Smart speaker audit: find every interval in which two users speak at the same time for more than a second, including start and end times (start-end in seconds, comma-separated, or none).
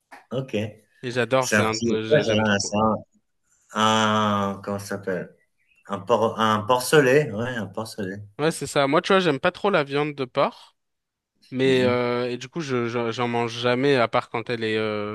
1.4-2.8